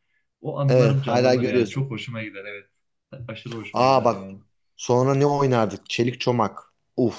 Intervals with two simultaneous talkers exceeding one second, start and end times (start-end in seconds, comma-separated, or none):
0.7-1.9